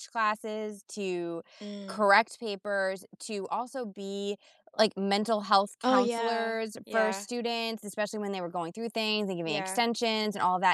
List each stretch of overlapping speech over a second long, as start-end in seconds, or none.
5.8-7.2